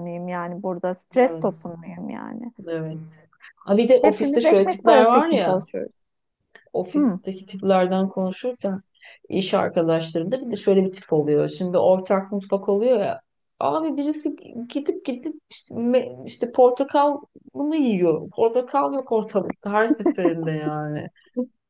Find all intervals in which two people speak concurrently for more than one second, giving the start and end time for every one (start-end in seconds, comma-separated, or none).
4.0-5.6